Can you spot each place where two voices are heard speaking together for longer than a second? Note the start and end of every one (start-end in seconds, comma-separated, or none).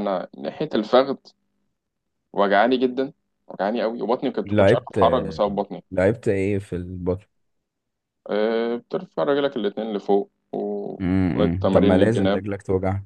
11.0-12.4